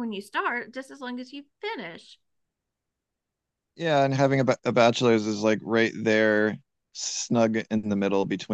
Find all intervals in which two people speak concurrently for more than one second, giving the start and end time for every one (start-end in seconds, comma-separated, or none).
none